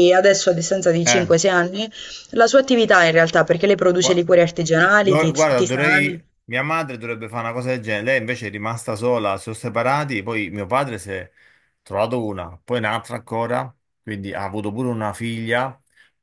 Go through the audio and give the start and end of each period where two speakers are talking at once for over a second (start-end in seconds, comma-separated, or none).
5.0-6.2